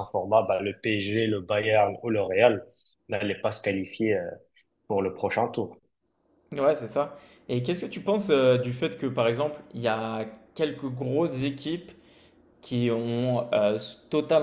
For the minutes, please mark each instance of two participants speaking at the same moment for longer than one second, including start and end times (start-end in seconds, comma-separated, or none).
none